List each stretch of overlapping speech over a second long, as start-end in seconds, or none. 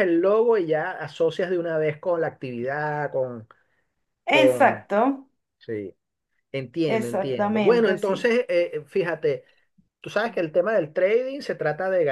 6.8-8.3